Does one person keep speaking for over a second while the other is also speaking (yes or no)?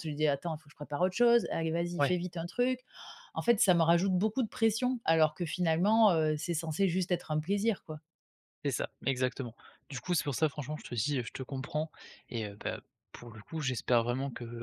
no